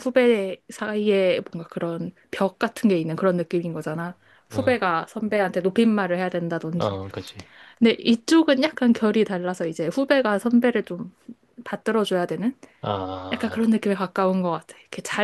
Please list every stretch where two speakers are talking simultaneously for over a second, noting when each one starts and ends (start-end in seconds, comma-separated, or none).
none